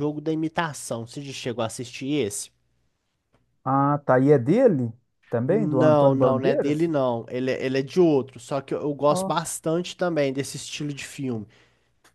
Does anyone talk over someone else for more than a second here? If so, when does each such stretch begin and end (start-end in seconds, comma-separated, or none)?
5.5-6.9